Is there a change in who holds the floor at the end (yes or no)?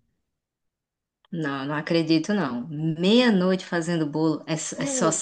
no